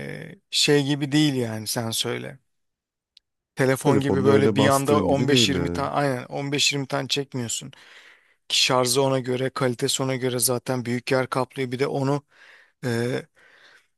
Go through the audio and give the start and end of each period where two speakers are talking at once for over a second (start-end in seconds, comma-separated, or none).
3.8-5.9